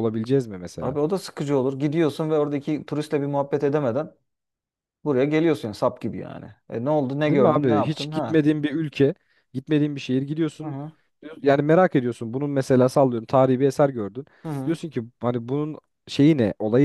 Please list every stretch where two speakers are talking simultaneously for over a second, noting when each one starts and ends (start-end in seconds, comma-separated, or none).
7.2-8.4